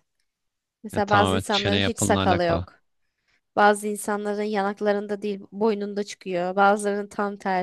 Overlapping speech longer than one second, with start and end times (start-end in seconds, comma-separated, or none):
0.9-2.7